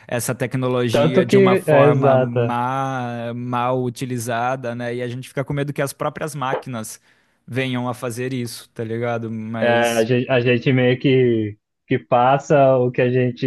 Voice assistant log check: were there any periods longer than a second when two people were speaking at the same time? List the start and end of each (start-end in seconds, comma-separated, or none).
0.9-2.6